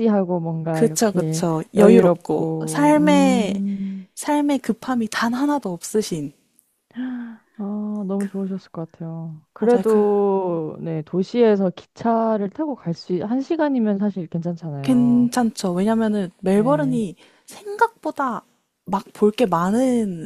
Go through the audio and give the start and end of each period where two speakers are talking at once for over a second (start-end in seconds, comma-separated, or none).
0.7-3.6